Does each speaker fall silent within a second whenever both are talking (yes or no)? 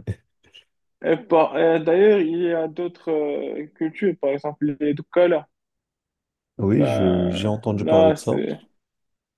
no